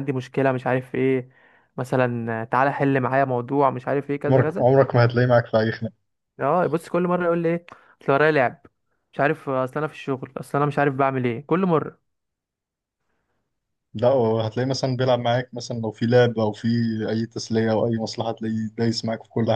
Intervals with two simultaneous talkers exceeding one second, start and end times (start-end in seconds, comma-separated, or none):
none